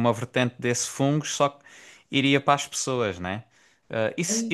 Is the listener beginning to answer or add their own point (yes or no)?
no